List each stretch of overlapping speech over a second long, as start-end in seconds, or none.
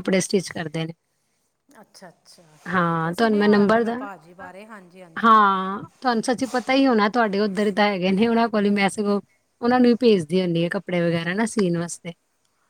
2.7-4.0